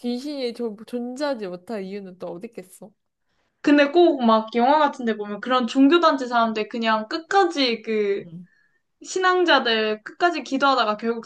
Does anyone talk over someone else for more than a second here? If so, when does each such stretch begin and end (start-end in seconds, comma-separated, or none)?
none